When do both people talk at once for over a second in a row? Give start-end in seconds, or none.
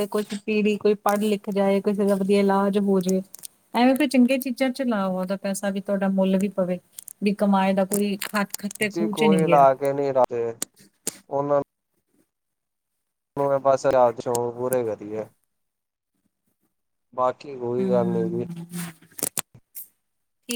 none